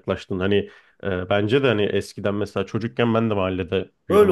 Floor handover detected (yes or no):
yes